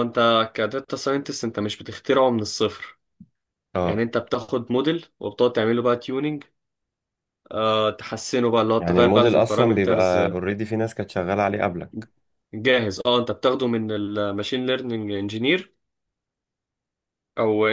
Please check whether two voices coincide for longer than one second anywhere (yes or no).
yes